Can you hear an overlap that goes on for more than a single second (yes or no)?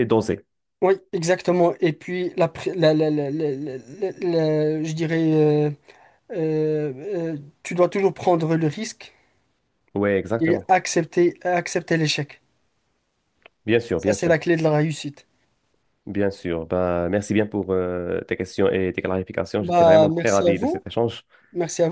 yes